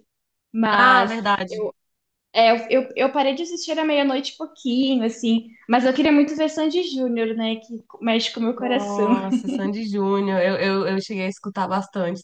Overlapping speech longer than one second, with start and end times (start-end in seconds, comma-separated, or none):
none